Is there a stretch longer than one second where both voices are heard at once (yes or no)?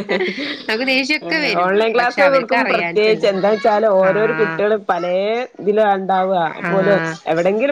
yes